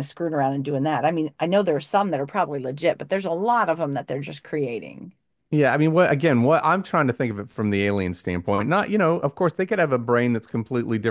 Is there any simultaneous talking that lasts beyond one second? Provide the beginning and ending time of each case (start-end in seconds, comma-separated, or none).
none